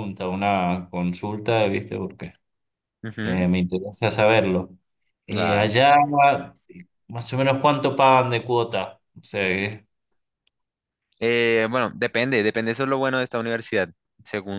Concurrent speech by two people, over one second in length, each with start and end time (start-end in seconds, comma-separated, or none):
none